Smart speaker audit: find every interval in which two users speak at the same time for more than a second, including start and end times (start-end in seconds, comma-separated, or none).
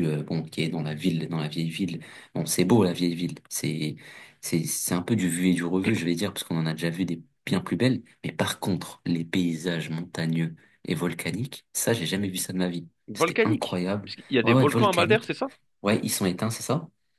13.1-15.3